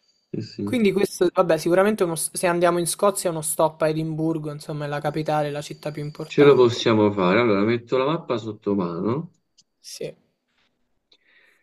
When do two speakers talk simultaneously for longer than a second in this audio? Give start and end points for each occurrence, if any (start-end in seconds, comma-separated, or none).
none